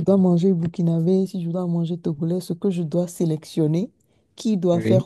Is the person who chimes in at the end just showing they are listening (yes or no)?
yes